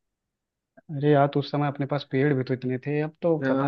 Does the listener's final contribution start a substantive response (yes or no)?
yes